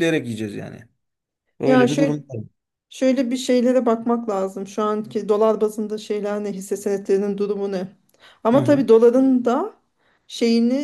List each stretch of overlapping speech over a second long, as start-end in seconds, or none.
none